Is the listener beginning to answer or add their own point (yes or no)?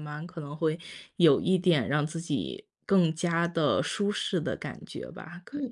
yes